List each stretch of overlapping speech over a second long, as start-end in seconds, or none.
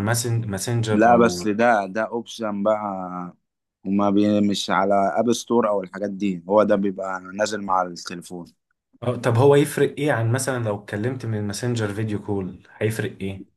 none